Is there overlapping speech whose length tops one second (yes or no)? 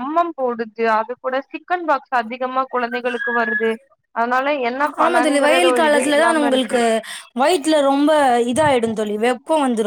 yes